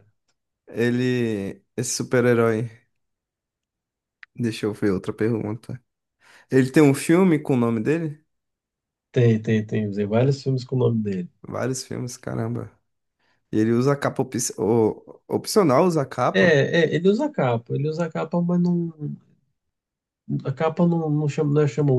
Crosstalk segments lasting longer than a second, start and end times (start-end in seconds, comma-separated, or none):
none